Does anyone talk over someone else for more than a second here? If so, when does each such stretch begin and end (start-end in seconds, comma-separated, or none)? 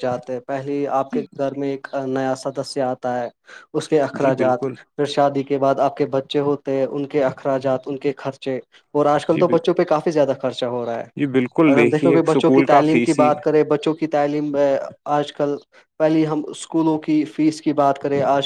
11.7-13.3